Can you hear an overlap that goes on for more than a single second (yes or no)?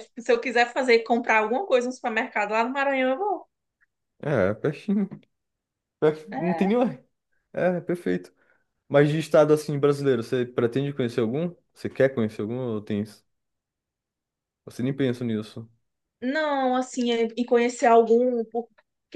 no